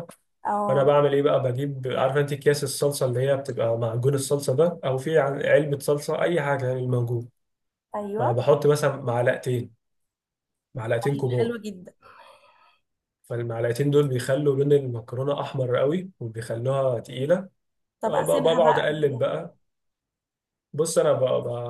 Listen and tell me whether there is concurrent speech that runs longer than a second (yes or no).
yes